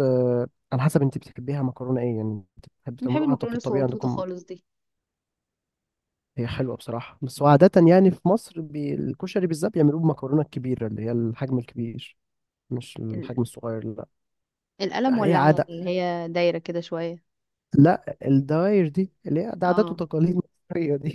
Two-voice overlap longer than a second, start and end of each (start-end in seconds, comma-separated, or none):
3.0-4.2